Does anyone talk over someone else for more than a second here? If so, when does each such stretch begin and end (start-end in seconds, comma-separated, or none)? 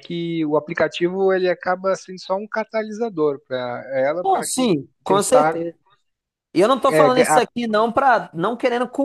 4.2-5.6